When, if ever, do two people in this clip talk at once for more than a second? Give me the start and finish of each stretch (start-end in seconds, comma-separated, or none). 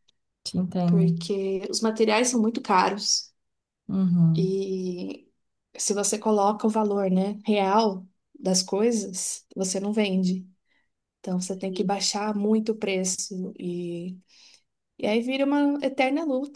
none